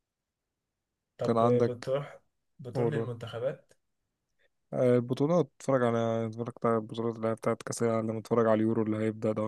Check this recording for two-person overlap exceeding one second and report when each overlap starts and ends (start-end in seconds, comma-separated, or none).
none